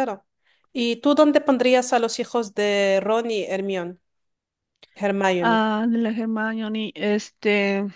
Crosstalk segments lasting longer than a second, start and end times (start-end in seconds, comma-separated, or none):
none